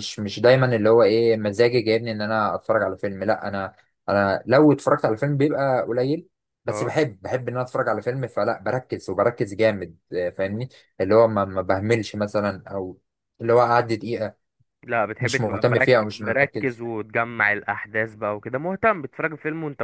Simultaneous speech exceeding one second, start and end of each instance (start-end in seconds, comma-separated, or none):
15.2-16.8